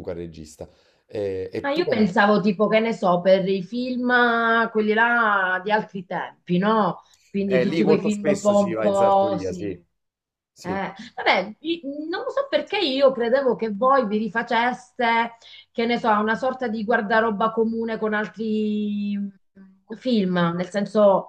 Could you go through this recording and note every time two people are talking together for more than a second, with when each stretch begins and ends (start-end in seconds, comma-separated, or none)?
7.5-9.8